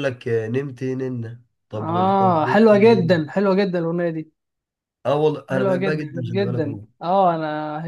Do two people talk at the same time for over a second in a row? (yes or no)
yes